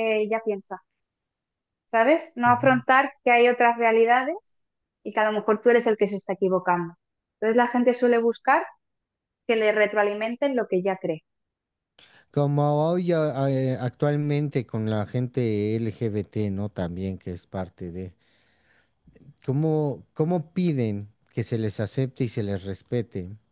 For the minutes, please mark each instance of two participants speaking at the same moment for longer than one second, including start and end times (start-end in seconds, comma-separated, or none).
none